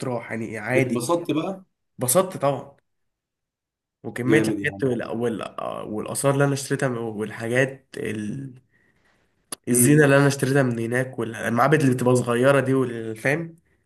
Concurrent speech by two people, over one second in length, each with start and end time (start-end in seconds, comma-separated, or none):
none